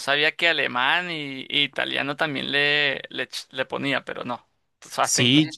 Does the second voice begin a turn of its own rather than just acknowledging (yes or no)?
yes